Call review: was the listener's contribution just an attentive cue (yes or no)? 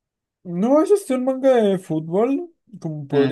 yes